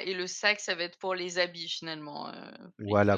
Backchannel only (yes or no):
no